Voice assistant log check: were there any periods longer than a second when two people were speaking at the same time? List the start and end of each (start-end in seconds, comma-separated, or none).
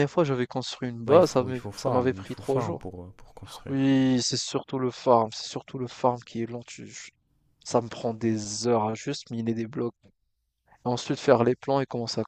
1.1-2.9